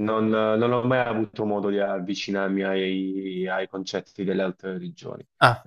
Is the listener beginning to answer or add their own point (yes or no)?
no